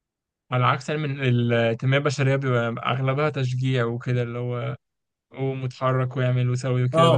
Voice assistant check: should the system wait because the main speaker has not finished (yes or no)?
no